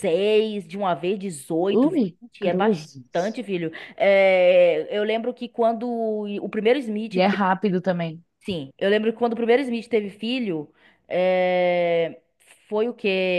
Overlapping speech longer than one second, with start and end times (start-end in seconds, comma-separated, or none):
1.8-3.4